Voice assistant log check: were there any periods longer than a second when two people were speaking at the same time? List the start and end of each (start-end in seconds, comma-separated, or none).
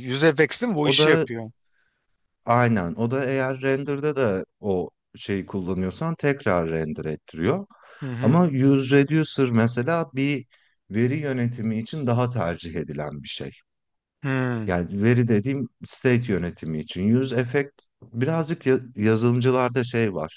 none